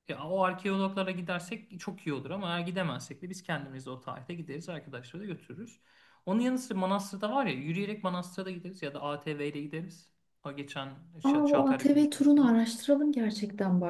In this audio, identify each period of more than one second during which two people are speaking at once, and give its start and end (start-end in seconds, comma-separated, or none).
11.2-12.6